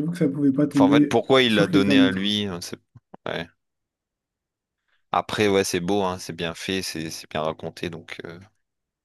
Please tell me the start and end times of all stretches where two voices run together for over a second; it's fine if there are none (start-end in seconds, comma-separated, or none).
0.7-2.3